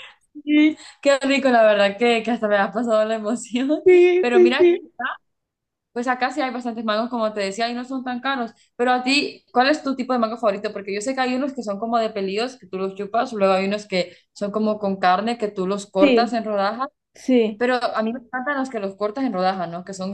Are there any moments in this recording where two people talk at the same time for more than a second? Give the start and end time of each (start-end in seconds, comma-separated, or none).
none